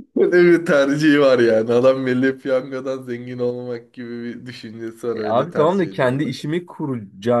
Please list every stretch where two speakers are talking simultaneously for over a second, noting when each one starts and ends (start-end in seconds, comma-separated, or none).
5.1-6.4